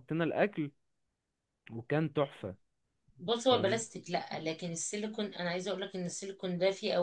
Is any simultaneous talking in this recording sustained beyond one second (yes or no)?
no